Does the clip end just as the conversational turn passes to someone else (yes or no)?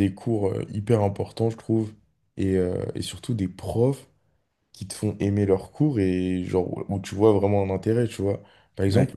no